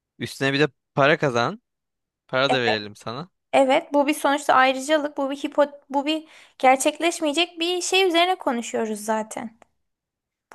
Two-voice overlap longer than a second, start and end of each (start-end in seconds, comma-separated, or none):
none